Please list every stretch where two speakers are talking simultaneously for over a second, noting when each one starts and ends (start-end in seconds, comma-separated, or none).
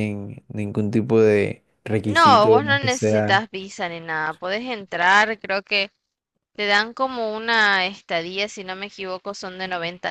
2.0-3.4